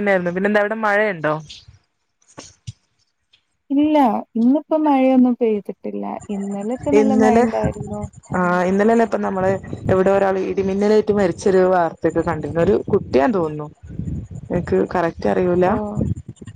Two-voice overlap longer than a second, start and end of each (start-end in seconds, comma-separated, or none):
none